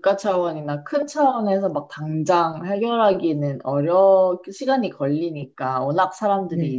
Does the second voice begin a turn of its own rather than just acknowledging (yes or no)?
no